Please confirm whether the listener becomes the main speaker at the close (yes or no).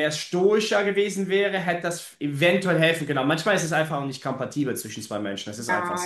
yes